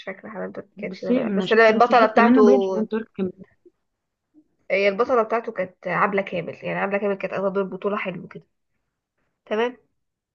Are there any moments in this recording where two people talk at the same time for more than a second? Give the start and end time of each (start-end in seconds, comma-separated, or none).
0.8-2.4